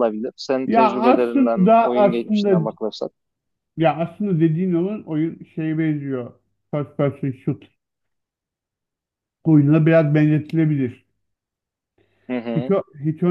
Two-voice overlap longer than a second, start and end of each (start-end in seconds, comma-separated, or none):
0.7-2.7